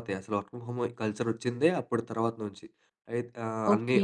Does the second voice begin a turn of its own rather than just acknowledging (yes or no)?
no